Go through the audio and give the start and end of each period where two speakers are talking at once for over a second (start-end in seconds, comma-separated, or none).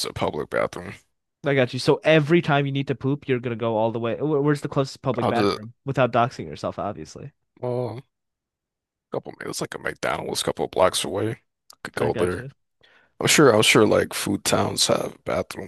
none